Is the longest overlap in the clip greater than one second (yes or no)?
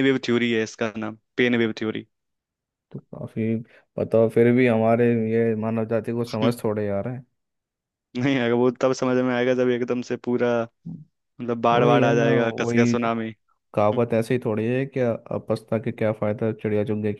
yes